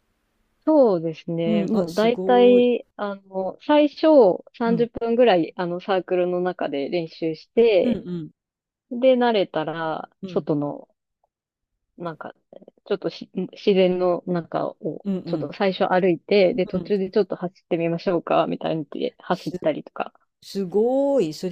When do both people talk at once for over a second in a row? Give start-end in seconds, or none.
1.5-2.7